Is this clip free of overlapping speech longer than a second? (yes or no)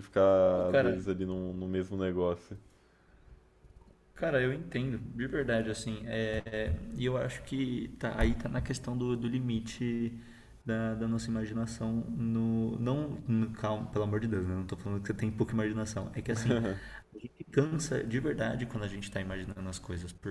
yes